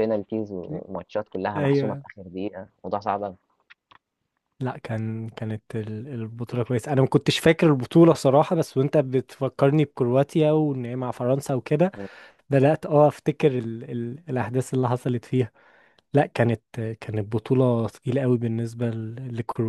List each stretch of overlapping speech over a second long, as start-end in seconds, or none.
none